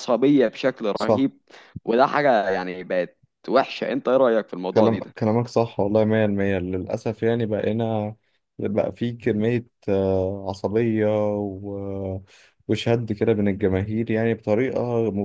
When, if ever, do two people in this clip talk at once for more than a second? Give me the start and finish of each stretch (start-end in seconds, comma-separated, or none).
none